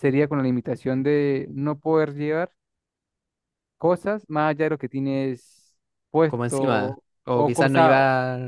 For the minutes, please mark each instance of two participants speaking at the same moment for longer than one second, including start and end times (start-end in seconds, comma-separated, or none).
6.2-8.0